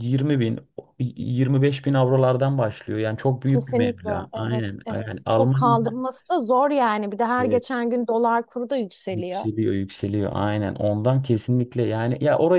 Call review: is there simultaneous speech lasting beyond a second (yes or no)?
yes